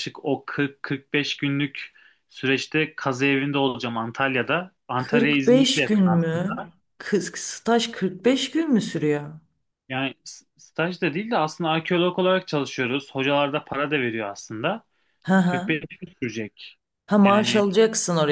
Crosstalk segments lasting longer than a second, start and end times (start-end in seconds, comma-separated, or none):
5.0-6.7